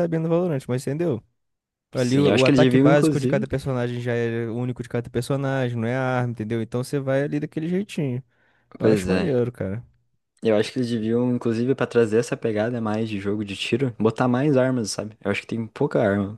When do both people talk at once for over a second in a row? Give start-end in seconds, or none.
1.9-3.4